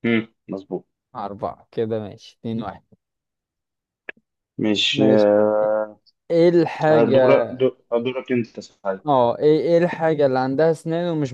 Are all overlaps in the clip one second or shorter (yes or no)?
yes